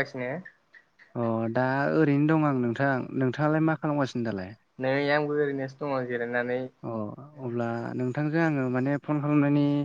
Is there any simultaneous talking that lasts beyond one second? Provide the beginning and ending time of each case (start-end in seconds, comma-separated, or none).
none